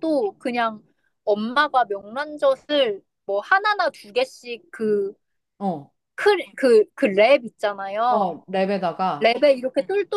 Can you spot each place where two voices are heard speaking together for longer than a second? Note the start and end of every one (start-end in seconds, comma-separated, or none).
none